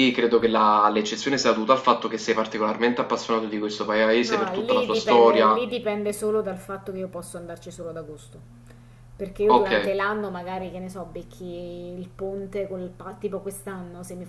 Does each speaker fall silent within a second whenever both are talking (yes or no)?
no